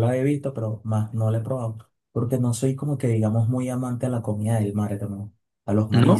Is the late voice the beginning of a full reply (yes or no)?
no